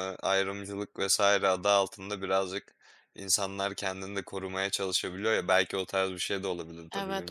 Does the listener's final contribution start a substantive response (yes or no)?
yes